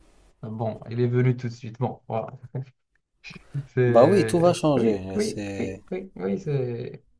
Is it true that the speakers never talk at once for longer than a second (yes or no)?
no